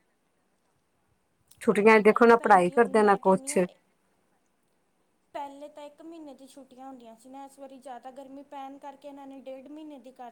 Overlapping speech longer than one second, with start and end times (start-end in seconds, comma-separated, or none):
1.8-3.6